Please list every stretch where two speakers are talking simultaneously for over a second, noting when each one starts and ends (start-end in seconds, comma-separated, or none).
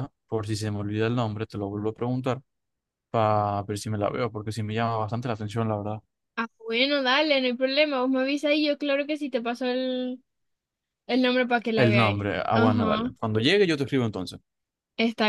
11.7-13.1